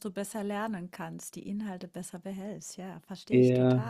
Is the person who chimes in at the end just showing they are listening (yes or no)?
no